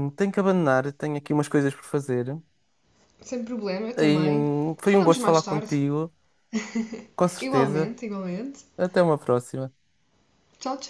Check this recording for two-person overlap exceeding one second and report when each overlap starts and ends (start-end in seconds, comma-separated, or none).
4.0-5.8